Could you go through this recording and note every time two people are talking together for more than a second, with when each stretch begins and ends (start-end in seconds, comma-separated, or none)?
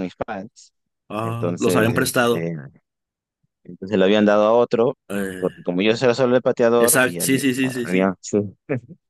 1.2-2.5, 6.8-8.1